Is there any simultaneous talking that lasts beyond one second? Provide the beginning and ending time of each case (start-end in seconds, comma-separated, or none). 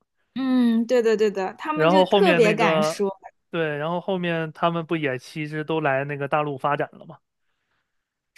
1.7-3.1